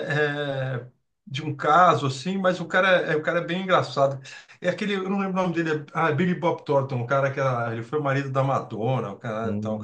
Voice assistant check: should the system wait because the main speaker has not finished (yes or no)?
no